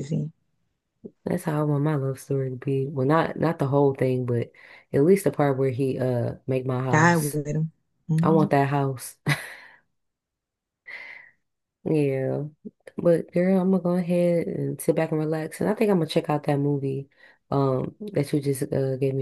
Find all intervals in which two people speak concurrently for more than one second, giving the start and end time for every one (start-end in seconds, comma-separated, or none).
none